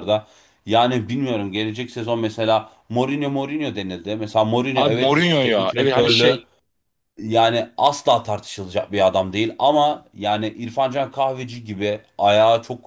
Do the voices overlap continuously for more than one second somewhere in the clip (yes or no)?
yes